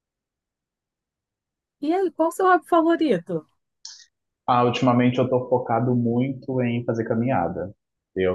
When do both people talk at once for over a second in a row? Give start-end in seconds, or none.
none